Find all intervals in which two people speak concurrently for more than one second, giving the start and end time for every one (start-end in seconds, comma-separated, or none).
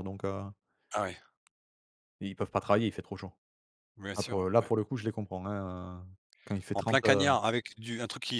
none